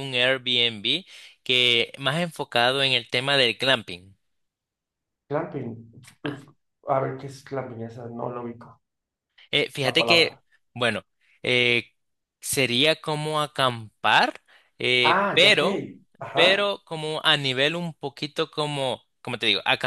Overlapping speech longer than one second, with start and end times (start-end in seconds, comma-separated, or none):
none